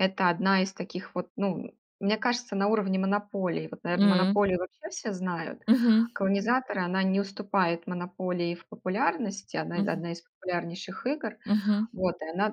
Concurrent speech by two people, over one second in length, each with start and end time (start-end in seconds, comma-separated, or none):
none